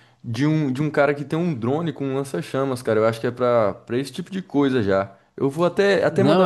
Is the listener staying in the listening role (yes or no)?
yes